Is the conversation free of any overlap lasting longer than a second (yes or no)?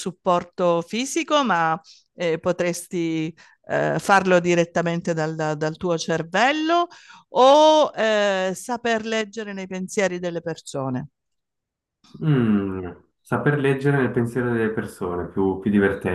yes